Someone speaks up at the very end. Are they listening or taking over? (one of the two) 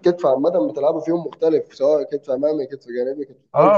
taking over